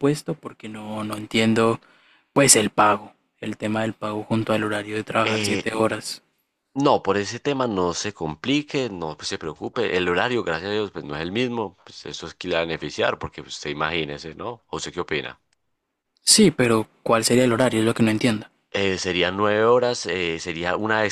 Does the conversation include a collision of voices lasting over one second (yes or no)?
no